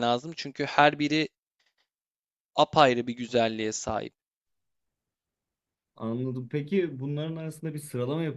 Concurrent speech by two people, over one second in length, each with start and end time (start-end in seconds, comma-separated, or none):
none